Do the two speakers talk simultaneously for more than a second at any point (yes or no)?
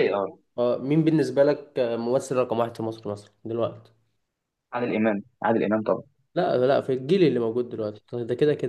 no